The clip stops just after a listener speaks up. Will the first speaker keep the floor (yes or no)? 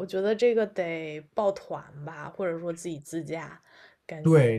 no